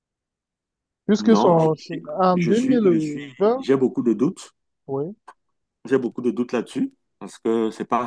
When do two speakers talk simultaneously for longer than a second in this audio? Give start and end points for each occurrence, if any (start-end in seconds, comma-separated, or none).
1.2-3.6